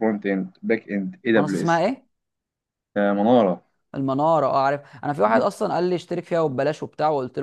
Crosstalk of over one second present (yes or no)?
no